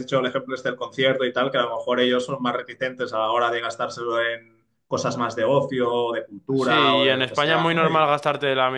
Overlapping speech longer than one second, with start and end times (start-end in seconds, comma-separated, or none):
6.5-8.1